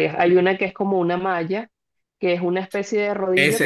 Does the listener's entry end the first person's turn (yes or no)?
yes